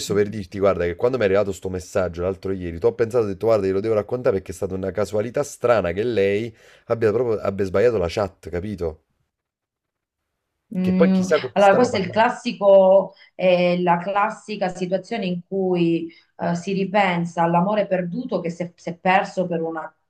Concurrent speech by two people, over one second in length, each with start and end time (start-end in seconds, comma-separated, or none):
10.8-12.3